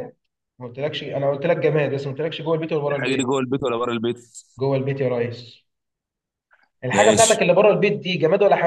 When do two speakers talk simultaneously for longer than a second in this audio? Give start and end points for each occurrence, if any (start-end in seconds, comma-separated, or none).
none